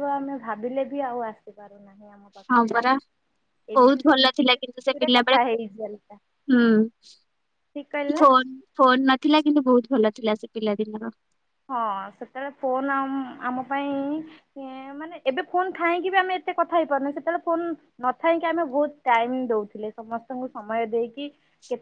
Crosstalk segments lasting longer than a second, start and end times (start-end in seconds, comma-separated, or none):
3.8-5.4